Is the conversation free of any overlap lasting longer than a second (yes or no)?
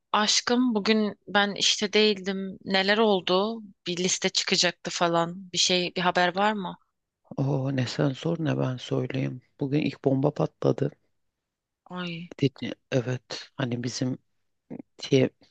yes